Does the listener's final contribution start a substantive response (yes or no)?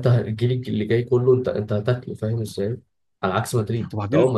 no